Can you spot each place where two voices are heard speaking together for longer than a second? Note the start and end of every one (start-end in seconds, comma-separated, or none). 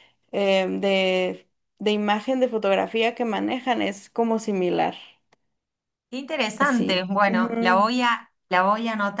6.6-7.9